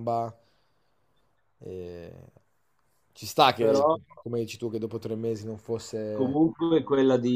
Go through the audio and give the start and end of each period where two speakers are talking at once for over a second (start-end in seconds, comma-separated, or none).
none